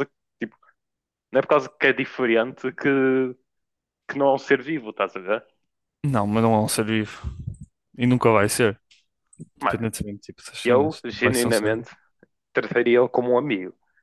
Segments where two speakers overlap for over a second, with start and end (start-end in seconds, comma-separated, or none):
10.6-11.9